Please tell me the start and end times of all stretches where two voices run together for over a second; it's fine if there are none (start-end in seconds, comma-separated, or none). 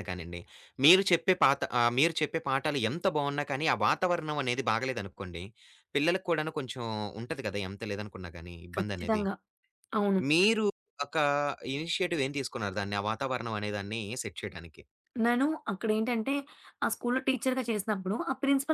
none